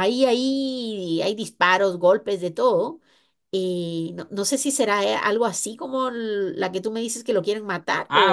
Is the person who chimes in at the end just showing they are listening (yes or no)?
no